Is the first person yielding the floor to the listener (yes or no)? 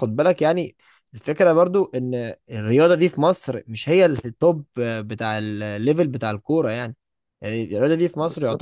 no